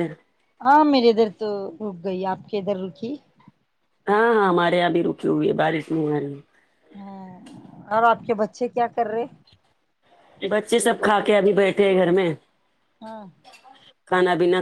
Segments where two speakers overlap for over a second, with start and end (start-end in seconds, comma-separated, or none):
none